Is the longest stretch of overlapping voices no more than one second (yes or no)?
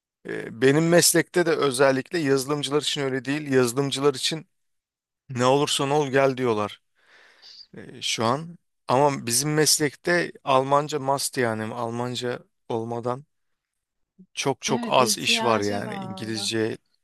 no